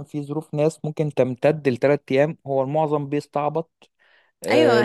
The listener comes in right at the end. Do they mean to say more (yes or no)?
yes